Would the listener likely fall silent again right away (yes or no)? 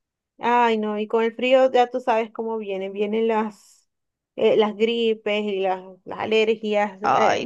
no